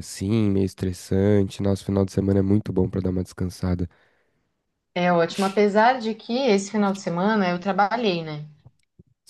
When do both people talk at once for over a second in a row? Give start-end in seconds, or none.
none